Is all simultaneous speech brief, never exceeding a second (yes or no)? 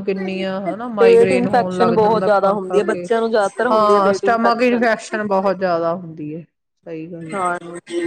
no